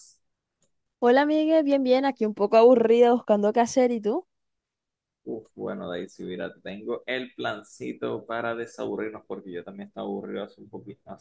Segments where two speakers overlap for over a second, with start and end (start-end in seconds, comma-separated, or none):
none